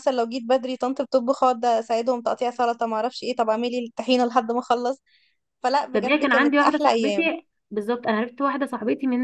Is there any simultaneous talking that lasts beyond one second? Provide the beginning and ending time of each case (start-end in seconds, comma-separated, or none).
5.9-7.3